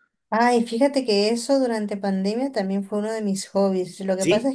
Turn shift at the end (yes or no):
no